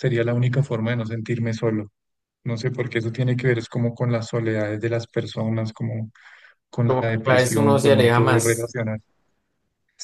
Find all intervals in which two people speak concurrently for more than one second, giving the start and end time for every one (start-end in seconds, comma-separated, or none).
6.8-8.7